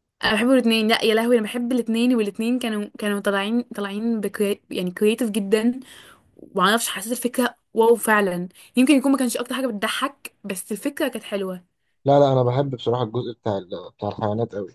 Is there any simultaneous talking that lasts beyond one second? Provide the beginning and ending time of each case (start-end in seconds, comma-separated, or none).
none